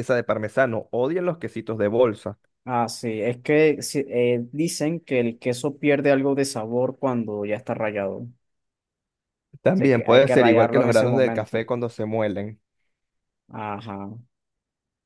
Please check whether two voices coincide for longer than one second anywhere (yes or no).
yes